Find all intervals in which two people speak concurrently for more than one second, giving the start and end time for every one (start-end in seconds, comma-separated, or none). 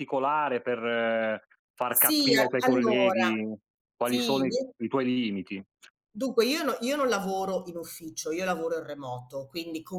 1.9-3.2